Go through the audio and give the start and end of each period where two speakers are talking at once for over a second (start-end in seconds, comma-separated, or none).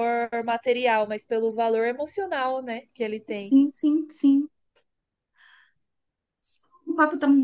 none